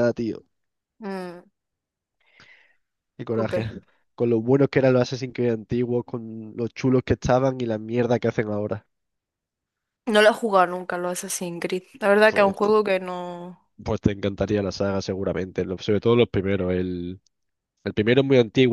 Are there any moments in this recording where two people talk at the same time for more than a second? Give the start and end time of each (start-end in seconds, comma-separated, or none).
none